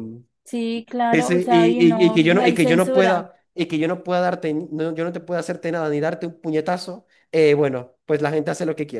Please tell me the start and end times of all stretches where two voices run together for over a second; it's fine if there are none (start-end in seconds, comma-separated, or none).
1.1-3.2